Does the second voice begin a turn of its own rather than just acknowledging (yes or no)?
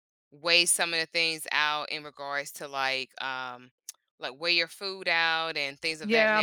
yes